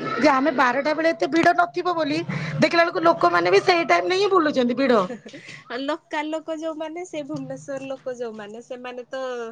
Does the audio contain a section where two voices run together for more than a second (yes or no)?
no